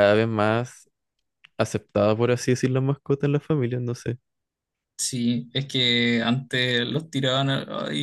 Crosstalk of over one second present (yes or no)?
no